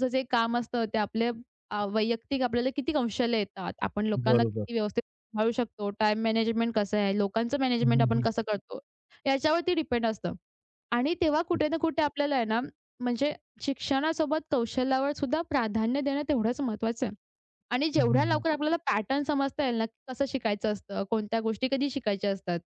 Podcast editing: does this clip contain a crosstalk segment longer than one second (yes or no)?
no